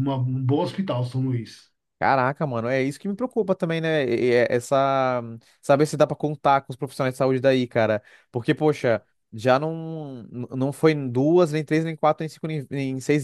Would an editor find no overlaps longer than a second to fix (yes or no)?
yes